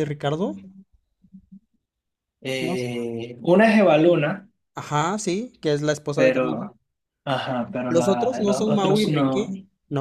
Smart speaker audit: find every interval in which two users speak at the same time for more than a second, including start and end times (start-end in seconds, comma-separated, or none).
7.9-9.5